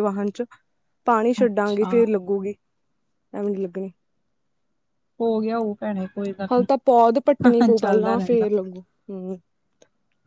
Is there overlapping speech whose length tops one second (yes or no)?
yes